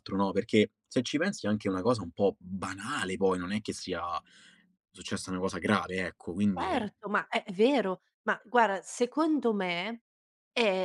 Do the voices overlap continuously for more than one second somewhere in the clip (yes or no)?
no